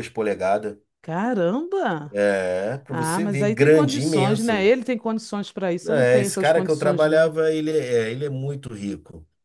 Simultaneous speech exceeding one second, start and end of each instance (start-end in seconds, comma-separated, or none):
2.9-4.5, 5.8-7.3